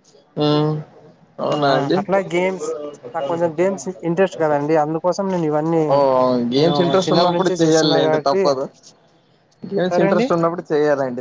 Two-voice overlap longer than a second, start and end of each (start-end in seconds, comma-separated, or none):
6.6-8.4